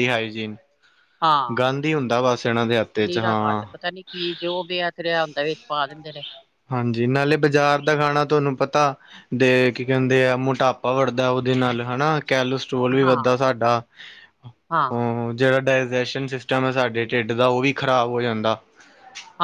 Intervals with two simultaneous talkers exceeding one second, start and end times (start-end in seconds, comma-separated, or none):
none